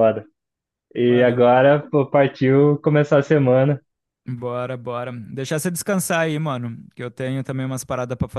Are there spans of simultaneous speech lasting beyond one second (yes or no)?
no